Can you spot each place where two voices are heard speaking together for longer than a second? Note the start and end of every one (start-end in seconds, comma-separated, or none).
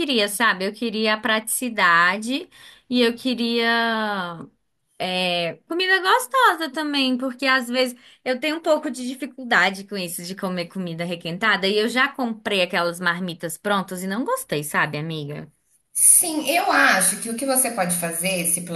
none